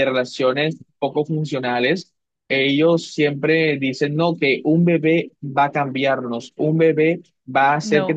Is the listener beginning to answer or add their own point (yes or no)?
no